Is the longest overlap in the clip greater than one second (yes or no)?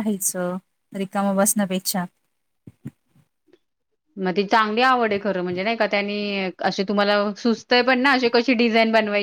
no